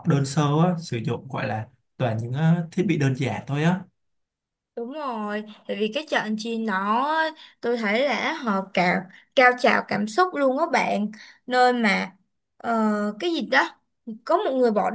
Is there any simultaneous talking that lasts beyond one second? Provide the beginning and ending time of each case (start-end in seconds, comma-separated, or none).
none